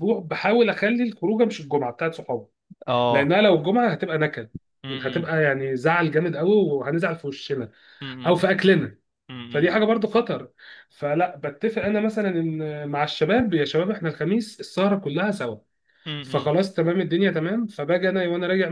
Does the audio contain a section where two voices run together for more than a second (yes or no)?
no